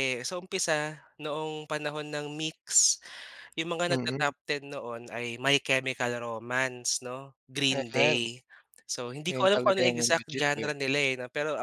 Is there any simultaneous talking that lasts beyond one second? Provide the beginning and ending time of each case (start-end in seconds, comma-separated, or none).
9.3-10.7